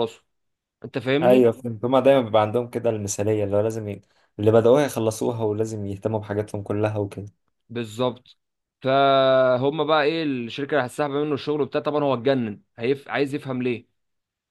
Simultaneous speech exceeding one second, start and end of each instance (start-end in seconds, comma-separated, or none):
none